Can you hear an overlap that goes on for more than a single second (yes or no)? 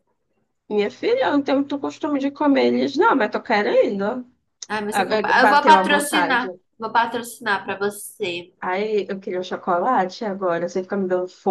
yes